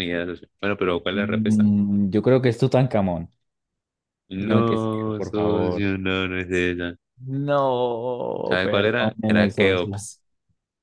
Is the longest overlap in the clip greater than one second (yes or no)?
yes